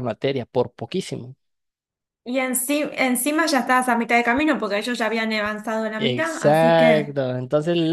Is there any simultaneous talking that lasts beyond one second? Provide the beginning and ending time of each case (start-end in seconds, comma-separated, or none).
6.0-7.2